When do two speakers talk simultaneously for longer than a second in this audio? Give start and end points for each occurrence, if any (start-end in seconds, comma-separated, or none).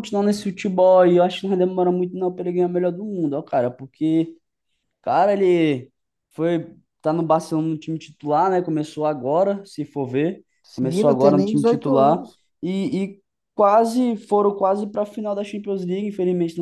10.6-12.3